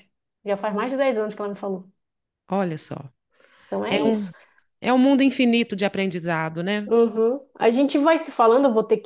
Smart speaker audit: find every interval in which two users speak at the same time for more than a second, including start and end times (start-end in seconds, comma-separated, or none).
none